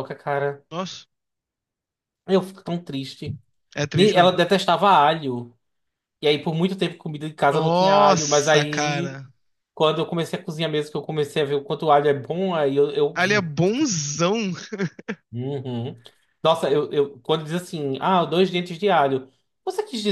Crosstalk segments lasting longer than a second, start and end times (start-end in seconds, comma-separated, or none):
7.5-9.2